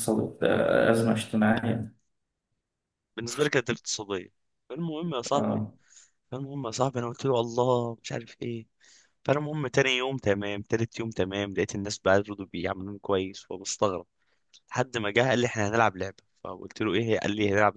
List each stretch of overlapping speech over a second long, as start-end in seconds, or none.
none